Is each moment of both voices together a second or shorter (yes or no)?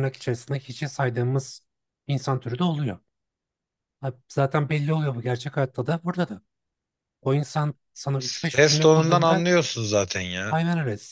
no